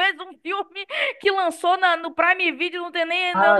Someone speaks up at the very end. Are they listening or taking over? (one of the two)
taking over